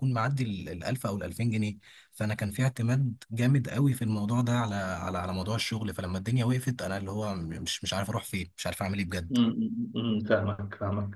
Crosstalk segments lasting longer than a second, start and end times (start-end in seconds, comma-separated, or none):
none